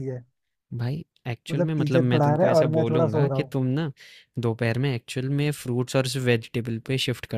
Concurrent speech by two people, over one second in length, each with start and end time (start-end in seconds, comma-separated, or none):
1.5-3.5